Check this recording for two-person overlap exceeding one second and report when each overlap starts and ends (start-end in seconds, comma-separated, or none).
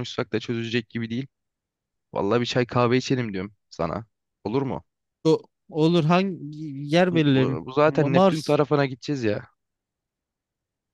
7.1-8.6